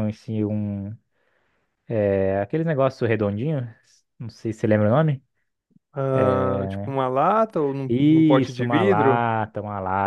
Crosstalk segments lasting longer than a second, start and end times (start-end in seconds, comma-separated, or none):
7.9-9.3